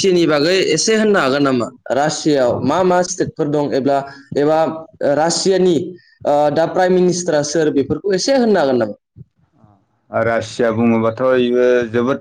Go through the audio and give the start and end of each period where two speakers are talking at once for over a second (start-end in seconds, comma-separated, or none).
none